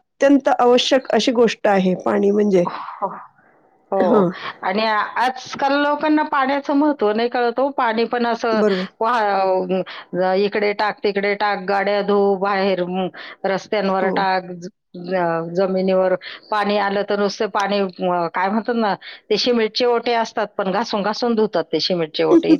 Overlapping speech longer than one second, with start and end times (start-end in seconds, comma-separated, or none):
none